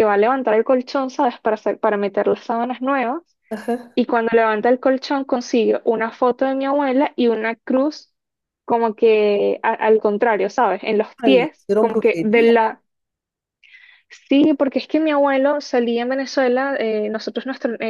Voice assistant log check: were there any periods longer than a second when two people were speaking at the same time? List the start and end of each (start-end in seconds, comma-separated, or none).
11.2-12.5